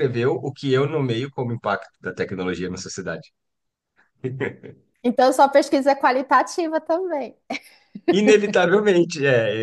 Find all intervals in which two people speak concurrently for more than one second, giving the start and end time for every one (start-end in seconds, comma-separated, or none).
none